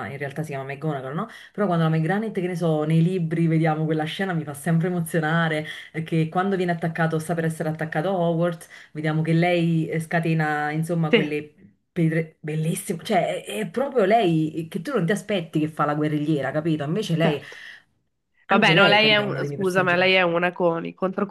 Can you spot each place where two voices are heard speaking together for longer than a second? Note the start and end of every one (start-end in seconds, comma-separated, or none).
18.5-19.9